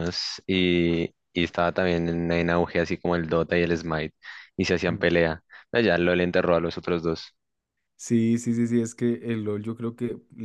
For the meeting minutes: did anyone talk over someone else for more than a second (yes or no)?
no